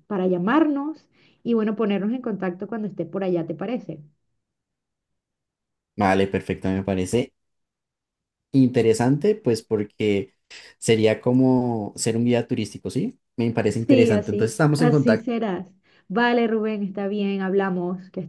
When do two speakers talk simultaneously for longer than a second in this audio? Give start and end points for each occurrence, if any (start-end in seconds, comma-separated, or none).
13.9-15.3